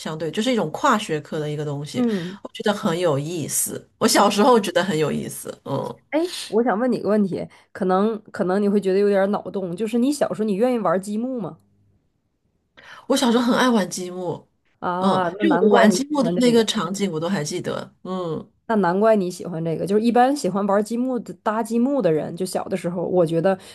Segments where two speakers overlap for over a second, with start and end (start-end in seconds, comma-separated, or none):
15.0-16.7